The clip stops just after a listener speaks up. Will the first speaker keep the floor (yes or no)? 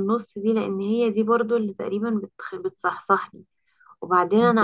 yes